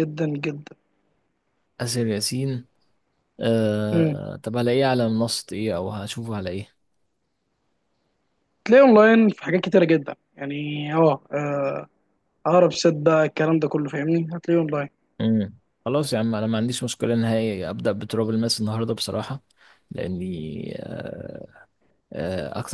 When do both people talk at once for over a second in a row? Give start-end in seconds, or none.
none